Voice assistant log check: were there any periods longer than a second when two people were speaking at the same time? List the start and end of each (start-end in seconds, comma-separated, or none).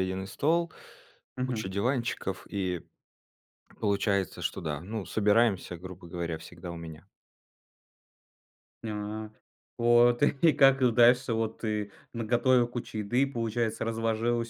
none